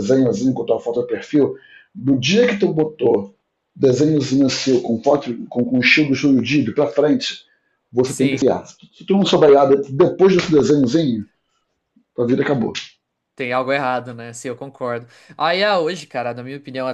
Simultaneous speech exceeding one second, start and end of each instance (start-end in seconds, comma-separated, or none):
none